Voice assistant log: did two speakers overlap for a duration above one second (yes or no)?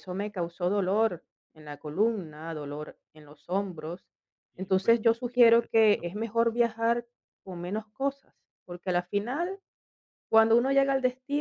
yes